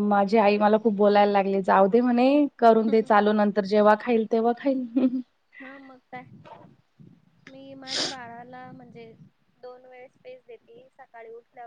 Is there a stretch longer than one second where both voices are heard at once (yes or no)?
no